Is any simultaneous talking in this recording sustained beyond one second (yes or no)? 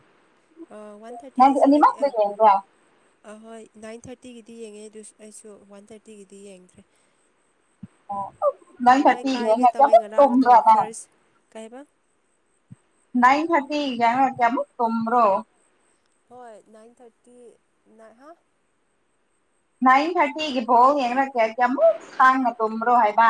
yes